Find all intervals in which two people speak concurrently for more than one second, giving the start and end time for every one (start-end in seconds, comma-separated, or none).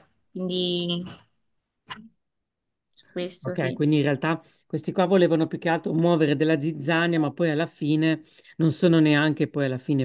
none